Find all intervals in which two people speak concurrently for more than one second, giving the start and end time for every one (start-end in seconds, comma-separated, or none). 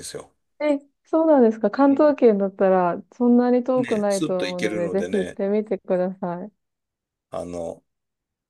3.8-5.4